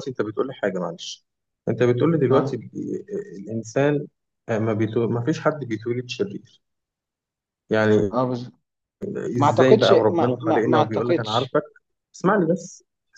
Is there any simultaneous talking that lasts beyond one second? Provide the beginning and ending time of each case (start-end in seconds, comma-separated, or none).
9.4-11.6